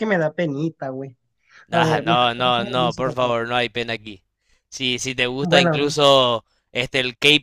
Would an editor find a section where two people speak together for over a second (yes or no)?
yes